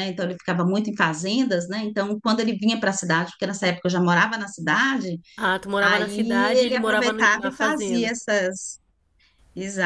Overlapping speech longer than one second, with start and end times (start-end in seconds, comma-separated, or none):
5.8-8.1